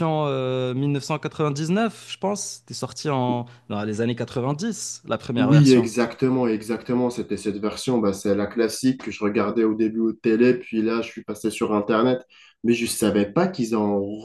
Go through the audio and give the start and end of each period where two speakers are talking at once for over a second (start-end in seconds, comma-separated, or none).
none